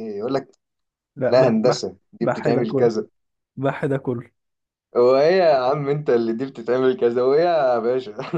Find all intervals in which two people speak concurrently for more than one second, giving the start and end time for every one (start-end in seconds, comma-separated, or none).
1.3-2.9